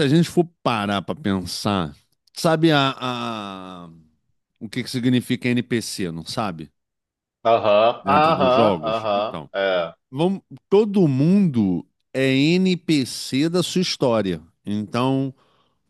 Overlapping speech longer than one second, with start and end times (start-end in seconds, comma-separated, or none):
8.0-9.5